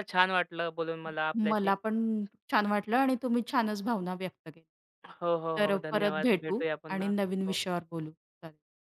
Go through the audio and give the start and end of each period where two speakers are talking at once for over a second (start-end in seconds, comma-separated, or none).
5.6-7.6